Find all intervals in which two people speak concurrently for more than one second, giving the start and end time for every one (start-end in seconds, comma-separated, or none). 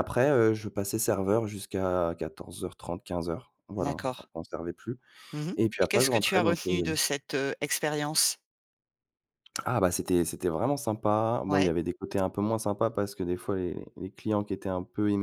5.5-7.1